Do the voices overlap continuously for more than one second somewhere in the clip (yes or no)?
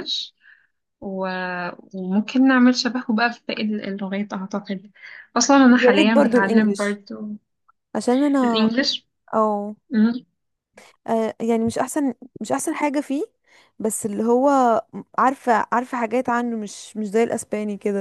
yes